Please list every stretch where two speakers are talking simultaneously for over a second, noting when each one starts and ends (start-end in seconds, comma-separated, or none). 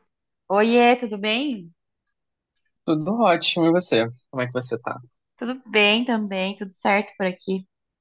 none